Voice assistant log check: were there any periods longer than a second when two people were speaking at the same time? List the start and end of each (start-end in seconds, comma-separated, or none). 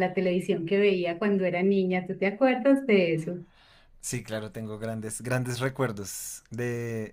none